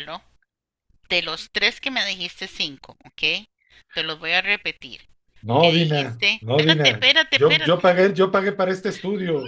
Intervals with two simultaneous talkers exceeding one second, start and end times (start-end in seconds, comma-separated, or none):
5.5-7.9